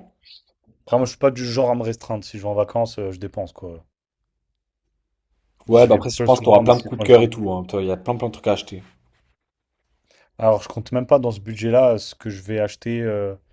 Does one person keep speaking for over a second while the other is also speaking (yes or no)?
yes